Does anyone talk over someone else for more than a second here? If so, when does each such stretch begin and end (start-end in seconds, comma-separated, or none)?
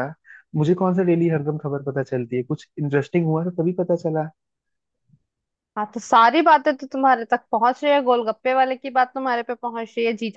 none